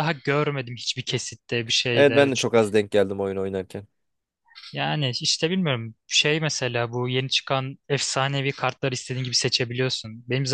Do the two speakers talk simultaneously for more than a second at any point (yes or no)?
no